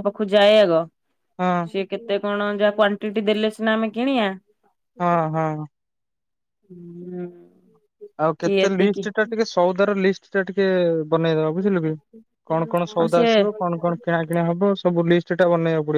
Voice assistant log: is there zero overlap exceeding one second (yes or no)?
yes